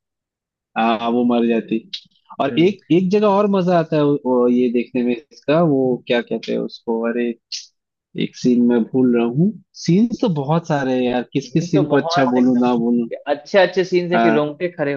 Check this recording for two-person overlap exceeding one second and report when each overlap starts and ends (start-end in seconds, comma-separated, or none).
11.4-13.1